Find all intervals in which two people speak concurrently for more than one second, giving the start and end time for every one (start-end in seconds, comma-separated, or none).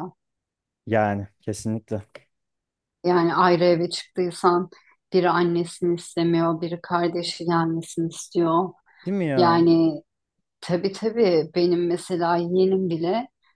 none